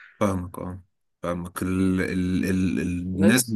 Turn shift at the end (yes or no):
no